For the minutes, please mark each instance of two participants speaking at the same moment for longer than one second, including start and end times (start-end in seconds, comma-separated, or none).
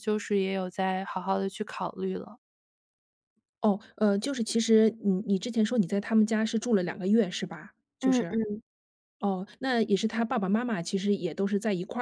none